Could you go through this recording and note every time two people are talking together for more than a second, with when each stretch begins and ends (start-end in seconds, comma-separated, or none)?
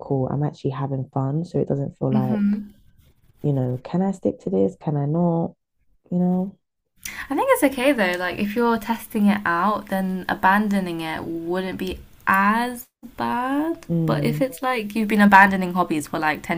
none